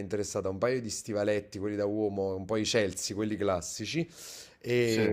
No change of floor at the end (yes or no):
yes